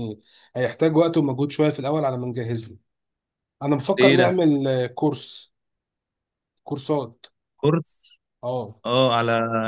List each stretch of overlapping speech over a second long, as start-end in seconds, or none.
none